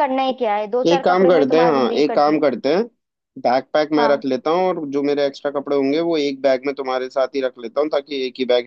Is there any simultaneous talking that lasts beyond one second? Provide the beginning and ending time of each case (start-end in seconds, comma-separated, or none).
0.9-2.4